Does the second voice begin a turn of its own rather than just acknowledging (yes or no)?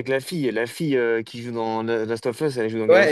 yes